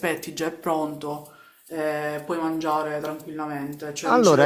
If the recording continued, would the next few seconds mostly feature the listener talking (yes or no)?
yes